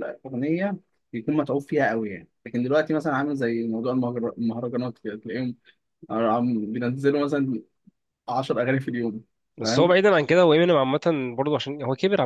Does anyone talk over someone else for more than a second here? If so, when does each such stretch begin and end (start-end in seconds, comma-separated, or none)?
none